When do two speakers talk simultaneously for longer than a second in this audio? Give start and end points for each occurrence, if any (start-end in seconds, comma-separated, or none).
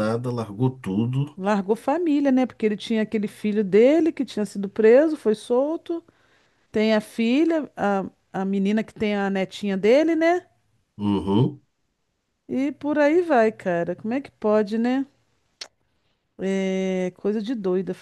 none